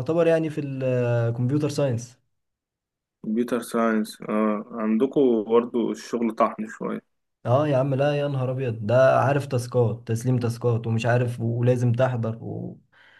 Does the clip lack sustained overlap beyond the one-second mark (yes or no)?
yes